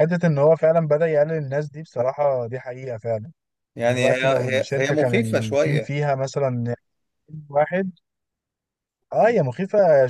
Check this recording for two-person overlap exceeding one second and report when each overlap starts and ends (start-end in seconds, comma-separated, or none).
3.8-6.0